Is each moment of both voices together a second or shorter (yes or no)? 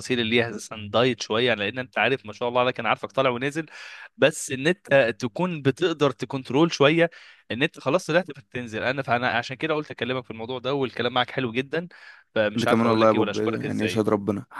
no